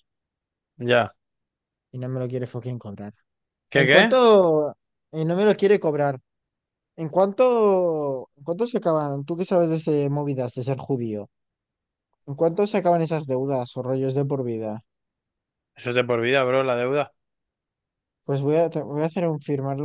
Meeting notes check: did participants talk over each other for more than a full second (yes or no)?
no